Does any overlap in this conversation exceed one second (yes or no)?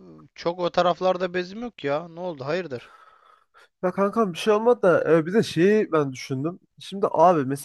no